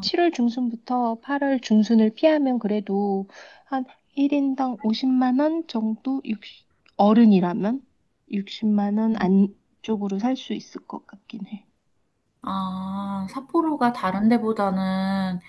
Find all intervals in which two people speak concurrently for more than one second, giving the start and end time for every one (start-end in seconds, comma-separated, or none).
none